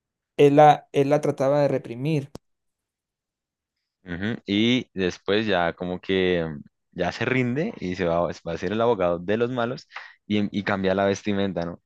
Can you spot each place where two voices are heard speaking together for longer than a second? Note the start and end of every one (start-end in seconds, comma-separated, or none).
none